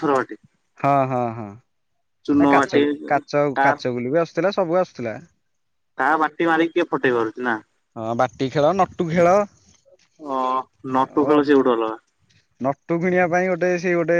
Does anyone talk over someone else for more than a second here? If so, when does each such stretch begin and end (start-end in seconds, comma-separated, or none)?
none